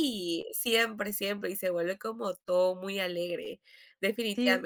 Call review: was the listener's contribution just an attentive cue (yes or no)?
no